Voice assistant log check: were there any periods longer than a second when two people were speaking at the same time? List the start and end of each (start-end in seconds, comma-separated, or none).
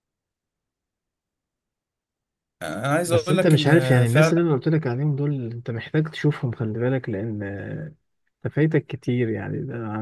3.1-4.3